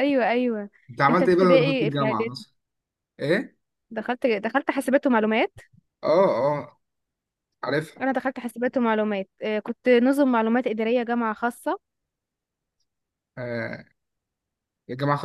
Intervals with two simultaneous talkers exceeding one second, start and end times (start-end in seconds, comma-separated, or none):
1.1-2.4